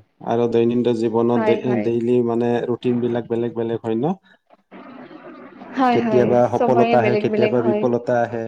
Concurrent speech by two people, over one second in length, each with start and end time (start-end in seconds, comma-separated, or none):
5.9-7.8